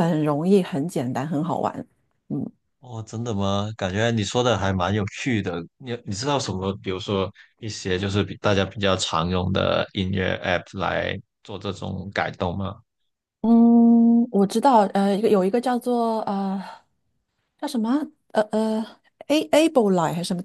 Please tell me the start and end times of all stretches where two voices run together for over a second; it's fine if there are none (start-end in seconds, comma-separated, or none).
none